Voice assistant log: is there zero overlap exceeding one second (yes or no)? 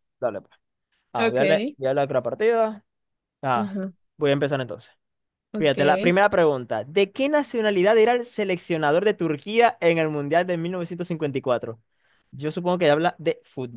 yes